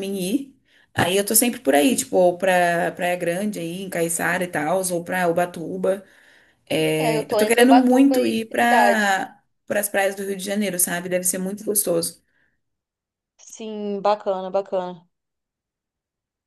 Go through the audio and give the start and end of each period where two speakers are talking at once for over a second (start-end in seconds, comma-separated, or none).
7.0-9.2